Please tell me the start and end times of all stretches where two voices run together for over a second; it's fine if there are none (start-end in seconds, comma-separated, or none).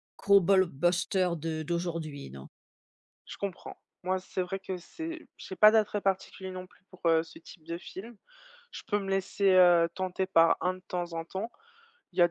none